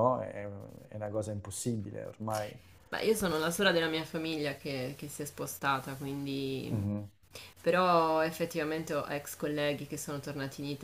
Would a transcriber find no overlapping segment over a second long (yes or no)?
yes